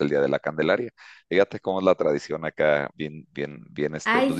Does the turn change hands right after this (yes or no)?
yes